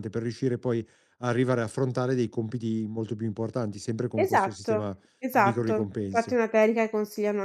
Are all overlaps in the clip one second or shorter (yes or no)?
no